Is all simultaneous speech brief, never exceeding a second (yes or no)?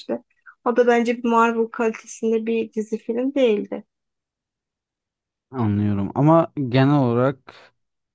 yes